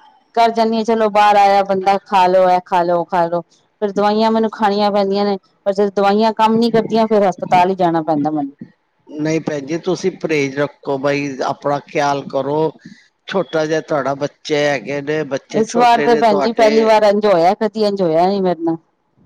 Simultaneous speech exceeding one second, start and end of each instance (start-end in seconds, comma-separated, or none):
none